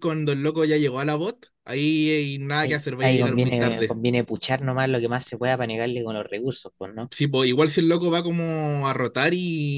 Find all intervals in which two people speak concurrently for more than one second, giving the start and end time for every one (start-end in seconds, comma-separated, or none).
2.6-4.0